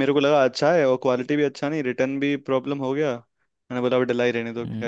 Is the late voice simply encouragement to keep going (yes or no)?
no